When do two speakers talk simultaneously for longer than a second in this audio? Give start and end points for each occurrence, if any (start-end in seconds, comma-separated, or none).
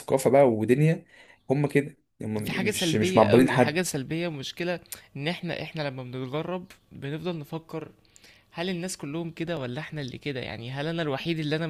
2.4-3.8